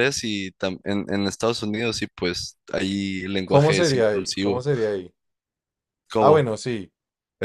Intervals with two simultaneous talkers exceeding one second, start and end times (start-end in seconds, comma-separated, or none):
3.4-4.7